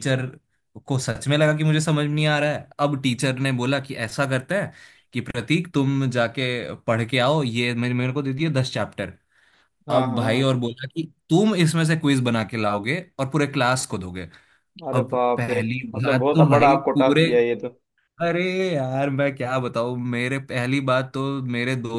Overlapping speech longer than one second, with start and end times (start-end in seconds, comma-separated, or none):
14.9-17.2